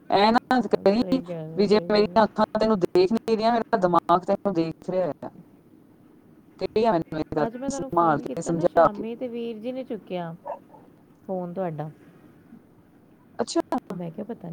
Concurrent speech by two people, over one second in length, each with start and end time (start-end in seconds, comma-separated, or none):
7.5-9.0